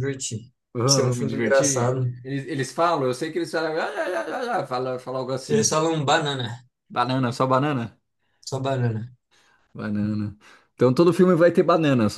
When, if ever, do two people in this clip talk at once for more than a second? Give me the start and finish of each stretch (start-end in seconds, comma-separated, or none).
0.8-2.1